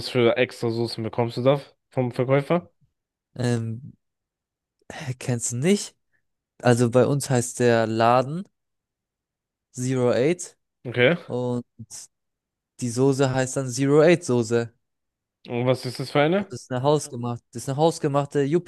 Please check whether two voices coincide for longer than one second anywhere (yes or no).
no